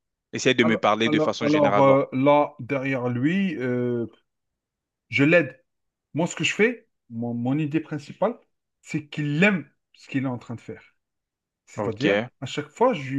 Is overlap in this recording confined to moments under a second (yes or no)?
no